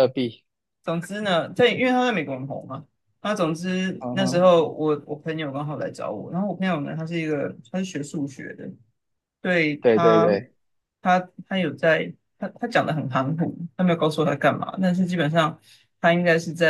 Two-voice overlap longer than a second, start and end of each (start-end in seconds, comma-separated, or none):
none